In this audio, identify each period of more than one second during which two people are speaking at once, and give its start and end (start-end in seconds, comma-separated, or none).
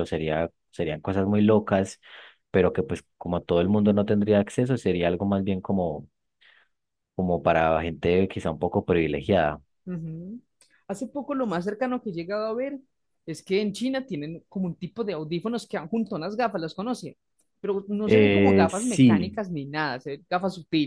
18.1-19.4